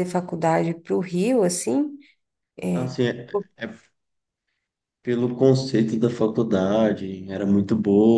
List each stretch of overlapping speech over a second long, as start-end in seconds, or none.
none